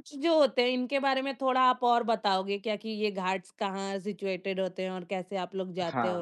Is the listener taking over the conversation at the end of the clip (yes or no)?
yes